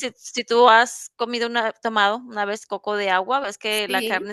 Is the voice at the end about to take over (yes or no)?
no